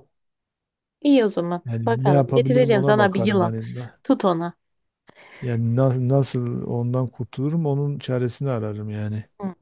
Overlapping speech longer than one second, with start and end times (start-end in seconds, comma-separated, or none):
1.7-3.5